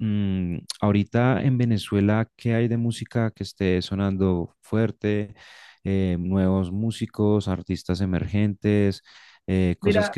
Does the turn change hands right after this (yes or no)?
no